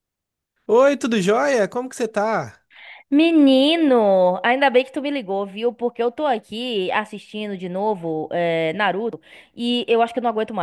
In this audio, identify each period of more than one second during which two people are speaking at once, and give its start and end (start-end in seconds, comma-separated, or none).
none